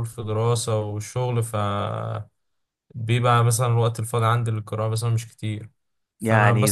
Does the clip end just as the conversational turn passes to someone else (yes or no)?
no